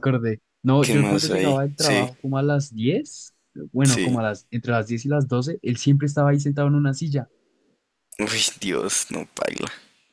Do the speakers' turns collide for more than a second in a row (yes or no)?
yes